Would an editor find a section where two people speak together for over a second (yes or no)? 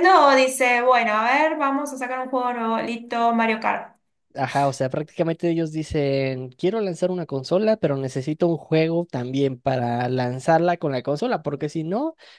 no